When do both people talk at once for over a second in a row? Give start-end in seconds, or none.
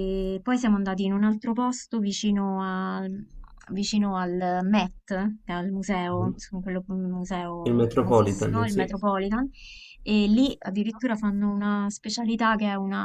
7.6-9.0